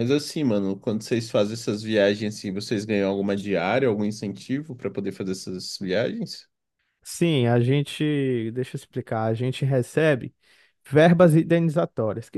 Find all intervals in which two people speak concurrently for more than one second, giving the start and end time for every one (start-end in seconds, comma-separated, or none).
none